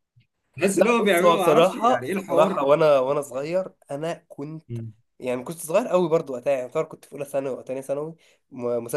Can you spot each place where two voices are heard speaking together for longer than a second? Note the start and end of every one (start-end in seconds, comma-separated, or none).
0.6-2.6